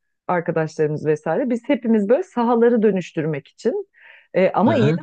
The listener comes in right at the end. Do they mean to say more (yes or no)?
no